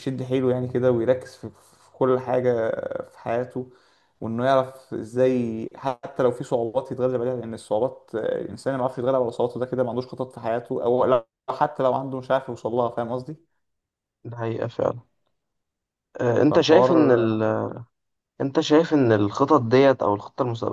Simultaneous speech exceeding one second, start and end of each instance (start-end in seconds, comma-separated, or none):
none